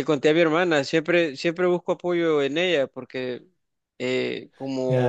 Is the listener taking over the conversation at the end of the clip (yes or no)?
yes